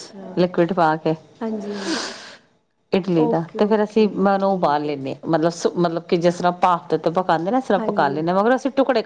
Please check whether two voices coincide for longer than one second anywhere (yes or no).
yes